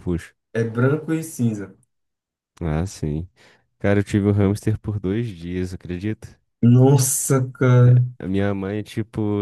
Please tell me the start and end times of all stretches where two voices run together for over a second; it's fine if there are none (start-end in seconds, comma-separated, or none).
none